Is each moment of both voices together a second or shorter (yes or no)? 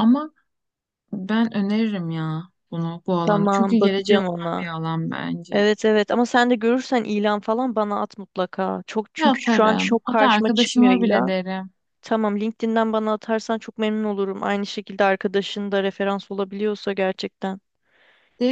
no